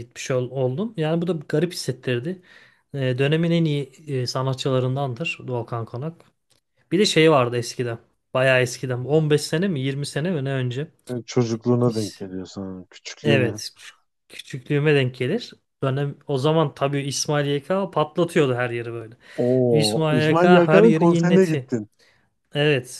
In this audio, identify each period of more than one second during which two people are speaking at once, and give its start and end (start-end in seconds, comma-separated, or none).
19.7-21.7